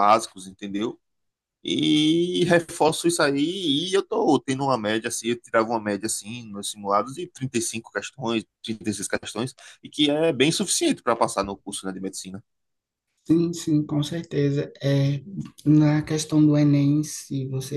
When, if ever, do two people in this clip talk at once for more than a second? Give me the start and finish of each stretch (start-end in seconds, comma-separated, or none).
none